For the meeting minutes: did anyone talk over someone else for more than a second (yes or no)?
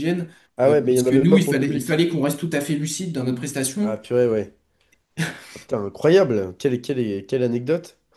yes